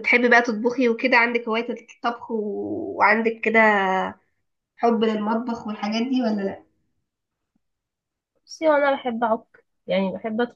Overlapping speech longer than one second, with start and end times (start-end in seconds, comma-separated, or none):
none